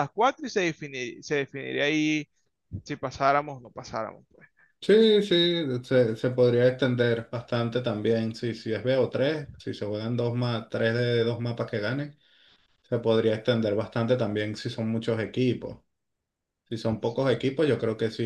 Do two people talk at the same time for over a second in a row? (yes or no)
no